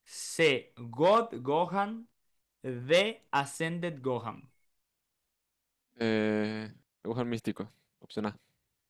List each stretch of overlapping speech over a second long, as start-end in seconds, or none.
none